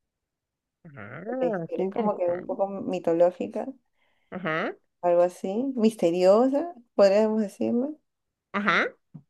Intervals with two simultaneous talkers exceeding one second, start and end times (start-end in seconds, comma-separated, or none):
1.3-2.6